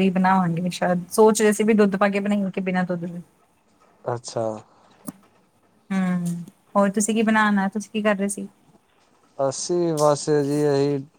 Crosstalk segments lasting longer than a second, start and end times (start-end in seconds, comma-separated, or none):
none